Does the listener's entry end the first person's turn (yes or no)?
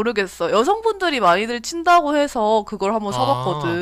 yes